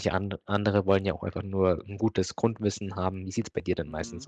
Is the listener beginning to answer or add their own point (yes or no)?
yes